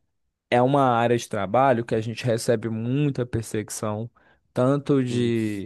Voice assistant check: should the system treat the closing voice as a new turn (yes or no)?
no